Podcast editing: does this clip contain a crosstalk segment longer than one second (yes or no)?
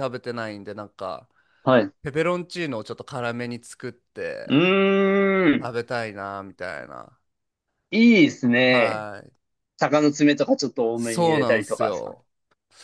yes